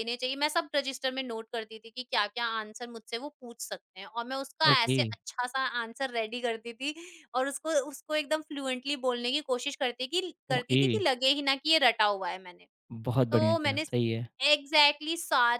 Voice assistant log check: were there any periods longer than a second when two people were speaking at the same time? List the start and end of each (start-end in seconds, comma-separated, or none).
none